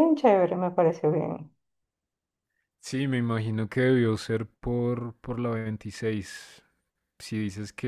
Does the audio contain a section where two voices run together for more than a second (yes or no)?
no